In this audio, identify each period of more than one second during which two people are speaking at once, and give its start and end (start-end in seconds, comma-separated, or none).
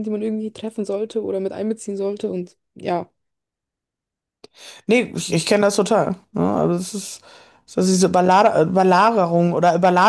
none